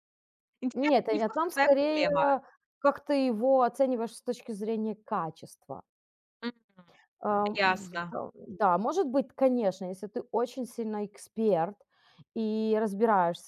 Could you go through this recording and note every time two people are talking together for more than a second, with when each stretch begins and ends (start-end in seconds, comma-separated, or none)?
0.7-2.1